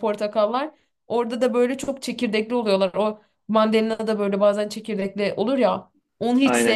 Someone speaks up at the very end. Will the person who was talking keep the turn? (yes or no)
no